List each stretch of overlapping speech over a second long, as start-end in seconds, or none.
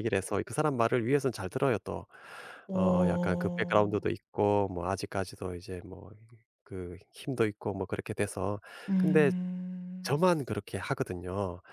2.7-4.0